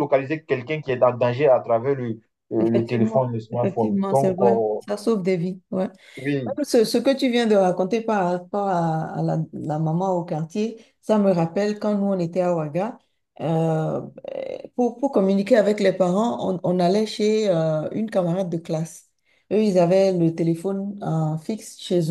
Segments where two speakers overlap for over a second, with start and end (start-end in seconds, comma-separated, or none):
2.6-4.8